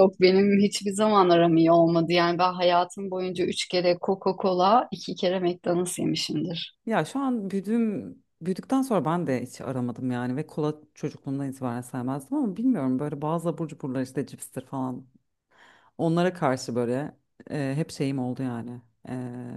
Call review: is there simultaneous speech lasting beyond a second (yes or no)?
no